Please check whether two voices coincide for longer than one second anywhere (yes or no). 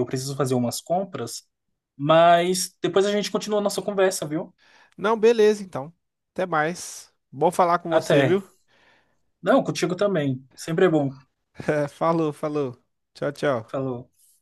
no